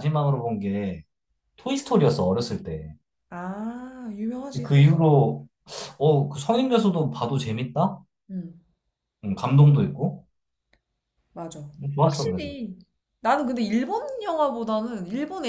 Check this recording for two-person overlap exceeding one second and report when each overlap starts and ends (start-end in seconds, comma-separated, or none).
none